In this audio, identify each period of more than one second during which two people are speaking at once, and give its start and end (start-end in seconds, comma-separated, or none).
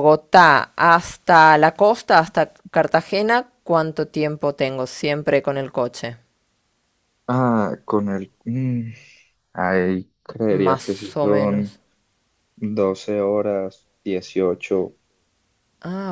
10.5-11.8